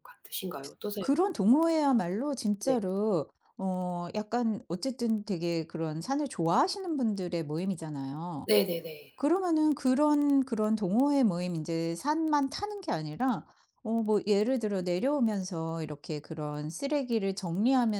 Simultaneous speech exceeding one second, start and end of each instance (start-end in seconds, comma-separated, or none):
none